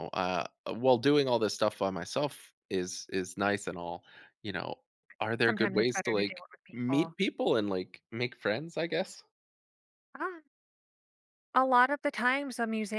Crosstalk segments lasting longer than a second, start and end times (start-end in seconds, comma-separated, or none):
5.4-7.2